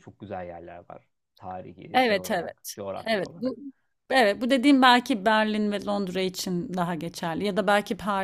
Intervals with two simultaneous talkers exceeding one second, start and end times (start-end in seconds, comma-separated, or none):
1.9-3.5